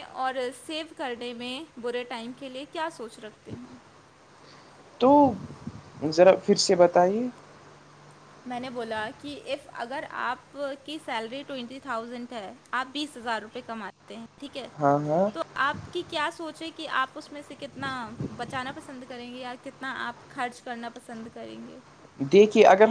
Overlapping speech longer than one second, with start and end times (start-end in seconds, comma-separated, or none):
none